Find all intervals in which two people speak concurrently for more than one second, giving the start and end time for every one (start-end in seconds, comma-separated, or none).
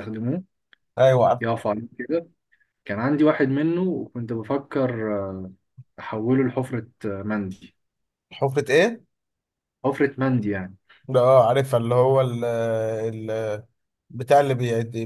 none